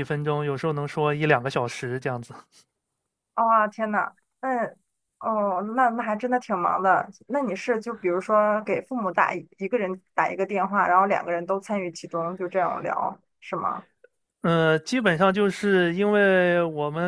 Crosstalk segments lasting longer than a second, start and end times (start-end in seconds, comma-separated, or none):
none